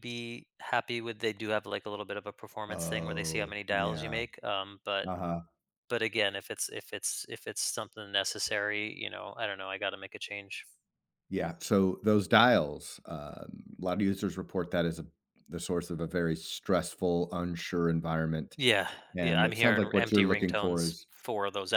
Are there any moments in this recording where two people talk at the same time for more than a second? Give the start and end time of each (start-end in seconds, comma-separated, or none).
2.7-4.2, 19.1-21.1